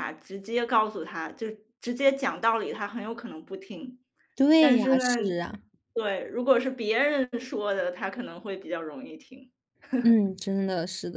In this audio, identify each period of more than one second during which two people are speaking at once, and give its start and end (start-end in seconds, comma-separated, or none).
none